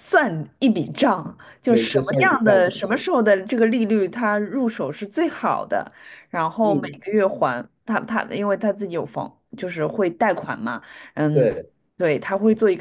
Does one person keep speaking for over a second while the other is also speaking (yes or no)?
yes